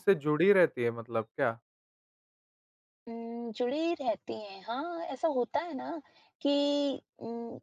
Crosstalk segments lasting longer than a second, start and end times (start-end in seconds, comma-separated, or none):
none